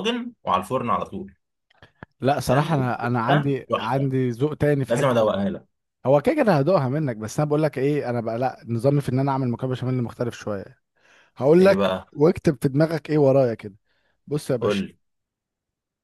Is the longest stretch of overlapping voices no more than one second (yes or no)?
no